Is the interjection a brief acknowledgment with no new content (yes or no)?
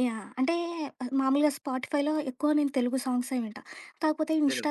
yes